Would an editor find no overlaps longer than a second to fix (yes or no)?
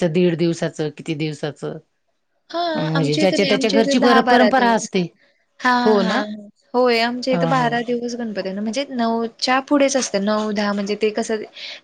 no